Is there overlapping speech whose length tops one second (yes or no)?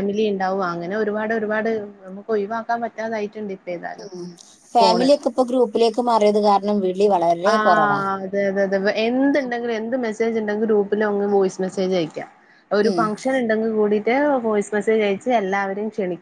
no